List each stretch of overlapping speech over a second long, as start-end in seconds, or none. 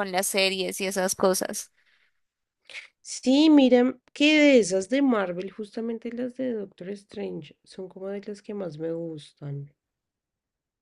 none